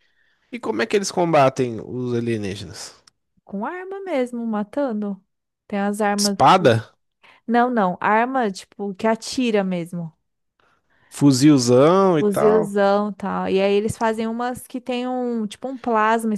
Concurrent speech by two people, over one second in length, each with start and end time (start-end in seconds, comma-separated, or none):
none